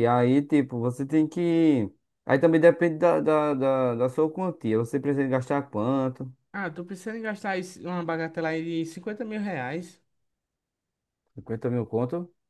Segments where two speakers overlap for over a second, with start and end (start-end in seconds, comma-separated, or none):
none